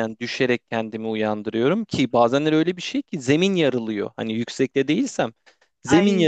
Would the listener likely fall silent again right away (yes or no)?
yes